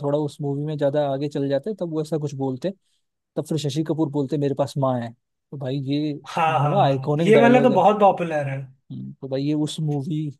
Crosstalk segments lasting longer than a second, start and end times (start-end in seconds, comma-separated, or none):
6.3-7.8